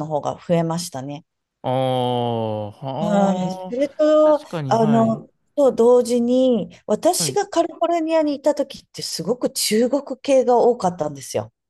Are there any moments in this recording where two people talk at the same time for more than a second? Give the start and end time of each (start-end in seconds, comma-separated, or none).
3.0-5.2